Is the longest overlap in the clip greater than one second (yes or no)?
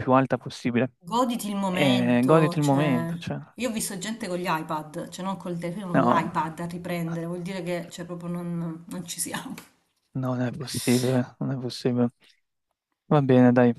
yes